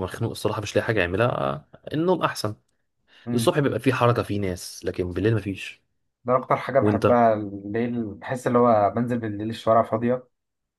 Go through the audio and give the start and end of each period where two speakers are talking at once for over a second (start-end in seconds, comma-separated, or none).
none